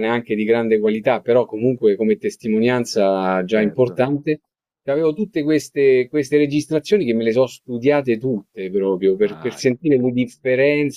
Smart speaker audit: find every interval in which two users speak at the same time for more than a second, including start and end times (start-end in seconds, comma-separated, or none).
9.2-10.5